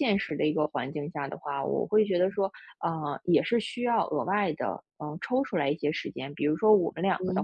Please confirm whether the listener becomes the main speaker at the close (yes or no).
no